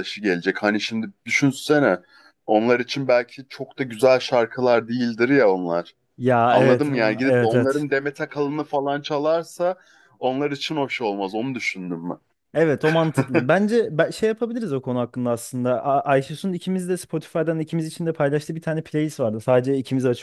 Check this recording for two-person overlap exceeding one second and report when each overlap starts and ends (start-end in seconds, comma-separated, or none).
6.5-7.9